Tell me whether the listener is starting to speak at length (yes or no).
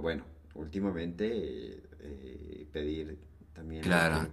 yes